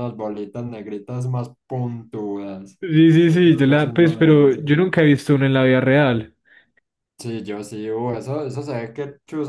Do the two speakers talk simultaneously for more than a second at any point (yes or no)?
yes